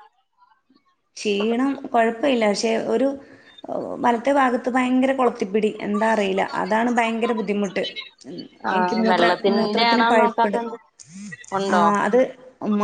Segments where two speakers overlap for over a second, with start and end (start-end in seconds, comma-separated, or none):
8.8-10.6